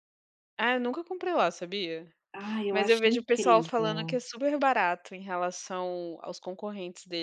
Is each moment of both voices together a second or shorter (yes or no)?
no